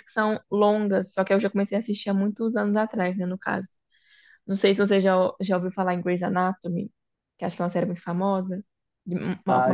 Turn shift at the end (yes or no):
yes